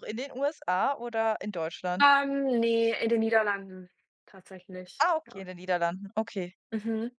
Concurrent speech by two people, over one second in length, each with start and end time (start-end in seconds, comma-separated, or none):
none